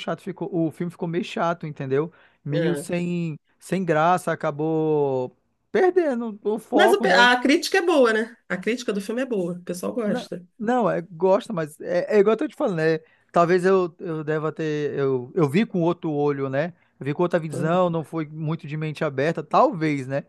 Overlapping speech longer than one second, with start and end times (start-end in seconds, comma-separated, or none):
none